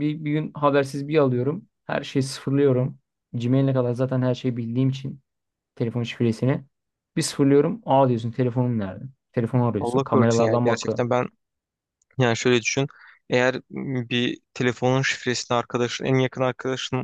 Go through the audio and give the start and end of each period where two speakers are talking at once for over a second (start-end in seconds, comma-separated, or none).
9.8-11.0